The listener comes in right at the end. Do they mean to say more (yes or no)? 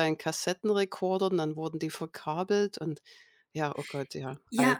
yes